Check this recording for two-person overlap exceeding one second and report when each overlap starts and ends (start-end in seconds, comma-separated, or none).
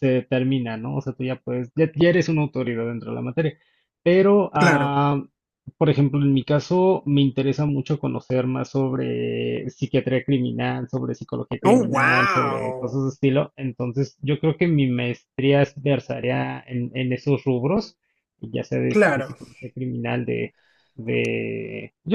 11.7-13.0